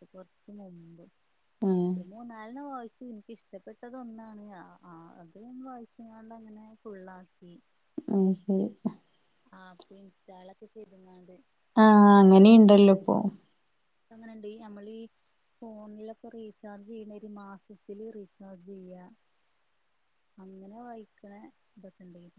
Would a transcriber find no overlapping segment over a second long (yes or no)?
yes